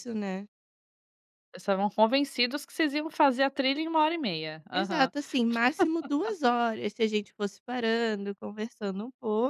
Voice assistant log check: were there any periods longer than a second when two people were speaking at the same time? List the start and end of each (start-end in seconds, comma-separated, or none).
none